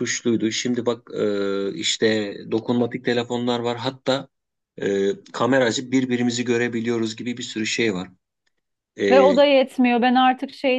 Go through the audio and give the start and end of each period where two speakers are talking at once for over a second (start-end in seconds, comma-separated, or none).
none